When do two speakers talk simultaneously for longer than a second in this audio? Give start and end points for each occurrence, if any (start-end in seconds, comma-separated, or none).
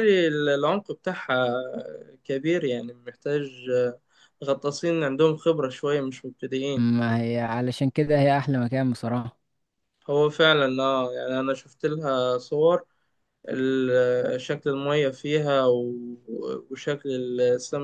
none